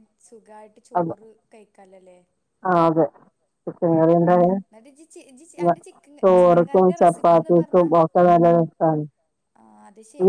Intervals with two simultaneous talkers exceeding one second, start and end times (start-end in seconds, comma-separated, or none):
6.2-7.8